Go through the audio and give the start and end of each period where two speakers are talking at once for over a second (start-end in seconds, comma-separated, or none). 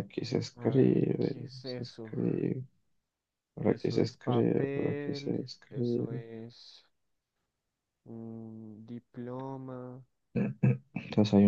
0.6-2.2, 3.6-6.2